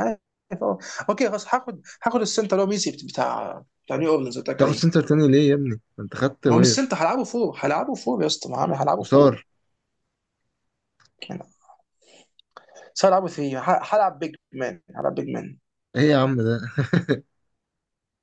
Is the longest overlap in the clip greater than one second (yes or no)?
no